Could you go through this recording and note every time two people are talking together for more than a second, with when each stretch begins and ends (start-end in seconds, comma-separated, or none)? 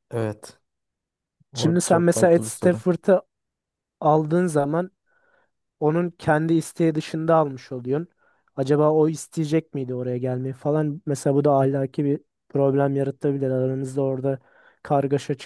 1.5-2.8